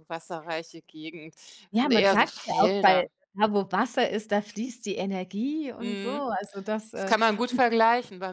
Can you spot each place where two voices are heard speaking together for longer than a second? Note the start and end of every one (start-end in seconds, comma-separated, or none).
1.7-3.1